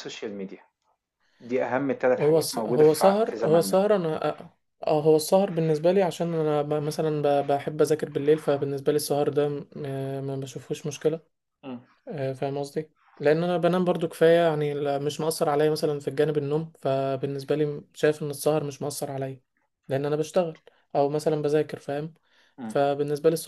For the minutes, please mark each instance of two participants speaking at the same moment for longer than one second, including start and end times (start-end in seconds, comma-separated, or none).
2.2-3.8